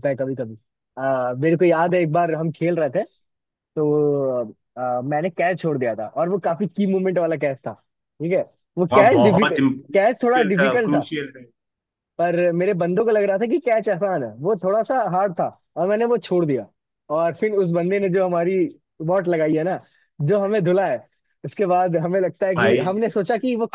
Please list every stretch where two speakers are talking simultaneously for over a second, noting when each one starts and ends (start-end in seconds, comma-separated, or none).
8.9-11.0